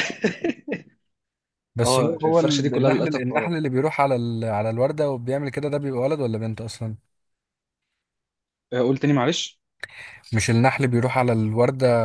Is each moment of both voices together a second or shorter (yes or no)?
no